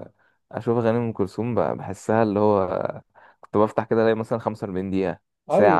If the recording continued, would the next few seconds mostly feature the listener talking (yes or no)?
yes